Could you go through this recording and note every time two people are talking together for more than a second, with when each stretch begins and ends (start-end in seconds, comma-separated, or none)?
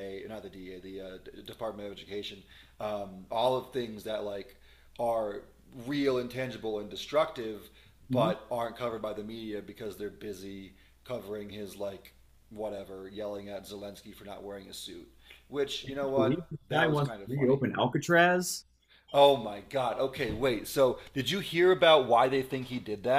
15.8-17.6